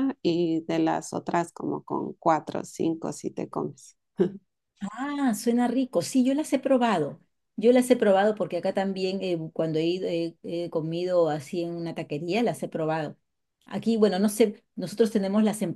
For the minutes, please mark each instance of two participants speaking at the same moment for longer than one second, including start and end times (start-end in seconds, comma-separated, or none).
none